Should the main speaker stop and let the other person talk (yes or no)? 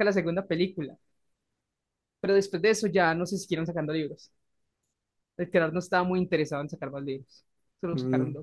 yes